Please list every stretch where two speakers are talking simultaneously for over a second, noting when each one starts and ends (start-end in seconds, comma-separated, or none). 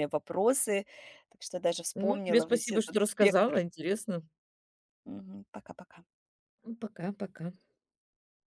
1.9-3.6